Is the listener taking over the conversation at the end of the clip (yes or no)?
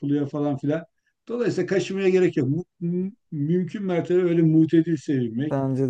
no